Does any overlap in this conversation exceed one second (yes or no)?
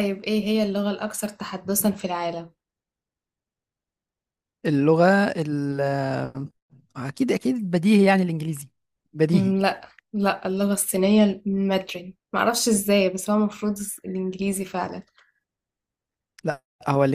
no